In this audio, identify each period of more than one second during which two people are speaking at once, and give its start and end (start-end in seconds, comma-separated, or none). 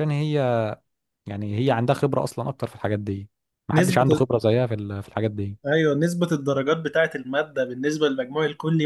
none